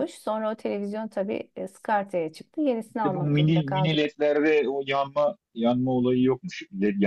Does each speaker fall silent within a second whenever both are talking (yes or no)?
no